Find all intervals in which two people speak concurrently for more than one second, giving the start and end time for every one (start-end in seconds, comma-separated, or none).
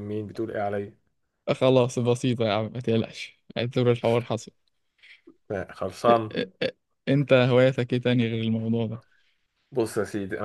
none